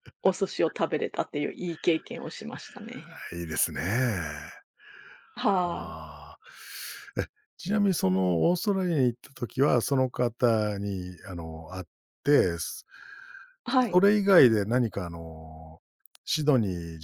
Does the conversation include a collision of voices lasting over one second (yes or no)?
no